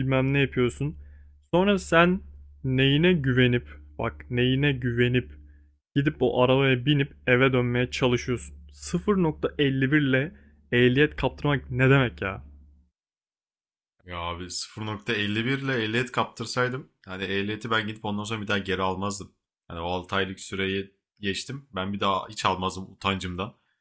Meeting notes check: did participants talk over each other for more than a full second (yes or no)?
no